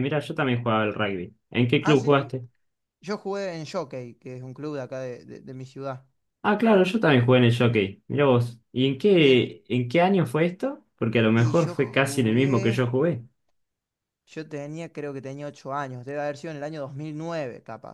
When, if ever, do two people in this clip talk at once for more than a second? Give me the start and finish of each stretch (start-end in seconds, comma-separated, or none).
11.3-12.8